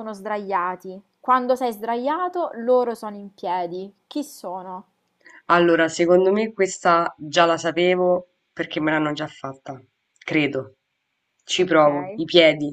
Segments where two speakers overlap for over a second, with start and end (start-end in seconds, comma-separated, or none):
none